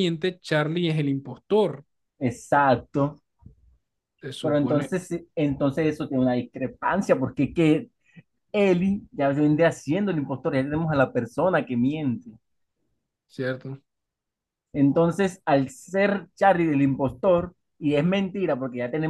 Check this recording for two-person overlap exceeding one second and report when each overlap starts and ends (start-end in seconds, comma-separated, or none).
none